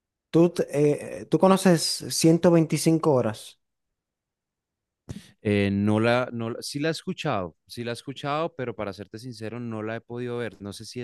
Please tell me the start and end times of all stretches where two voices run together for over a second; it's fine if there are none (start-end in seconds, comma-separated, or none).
none